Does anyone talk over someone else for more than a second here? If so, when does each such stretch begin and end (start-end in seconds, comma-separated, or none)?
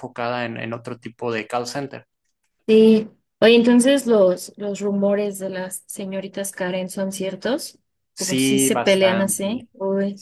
8.2-9.7